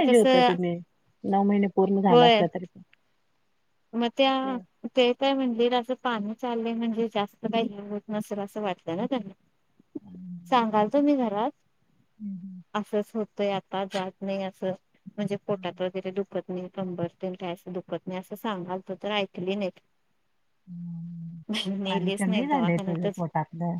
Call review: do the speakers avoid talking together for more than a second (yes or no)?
no